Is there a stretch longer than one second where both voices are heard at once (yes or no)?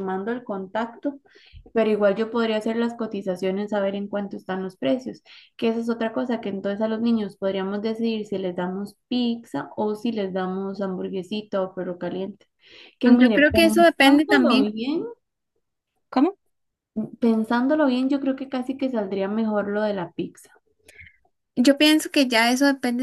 yes